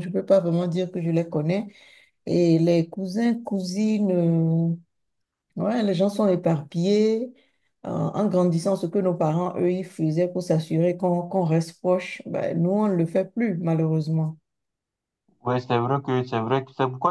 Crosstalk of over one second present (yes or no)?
no